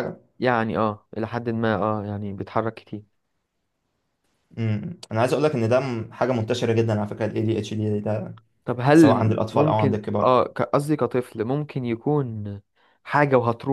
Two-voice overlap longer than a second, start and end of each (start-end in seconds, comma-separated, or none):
8.9-10.3